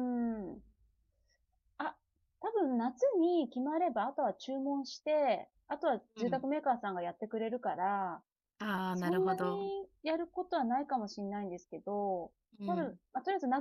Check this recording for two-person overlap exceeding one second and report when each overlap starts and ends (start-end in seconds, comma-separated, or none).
none